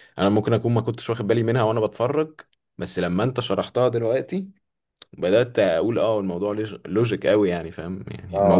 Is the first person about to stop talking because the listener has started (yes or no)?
yes